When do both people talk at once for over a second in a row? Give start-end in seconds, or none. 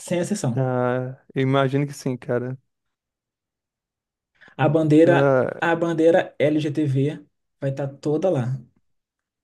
none